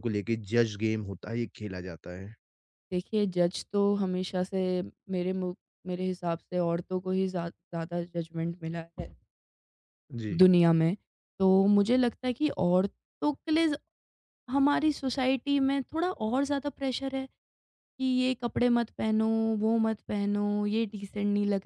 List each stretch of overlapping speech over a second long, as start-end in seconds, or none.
none